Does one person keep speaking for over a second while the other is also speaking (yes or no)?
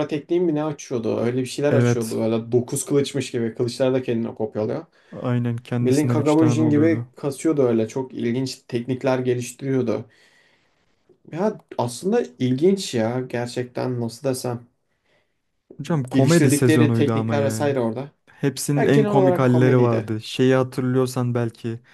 yes